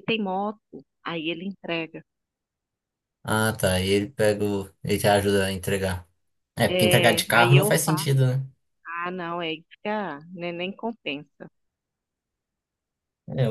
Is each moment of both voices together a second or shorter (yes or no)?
no